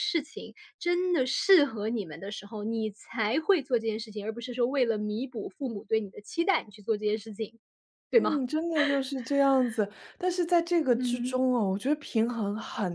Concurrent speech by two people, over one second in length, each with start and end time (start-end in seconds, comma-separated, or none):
none